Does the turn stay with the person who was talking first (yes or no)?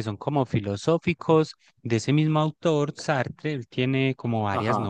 yes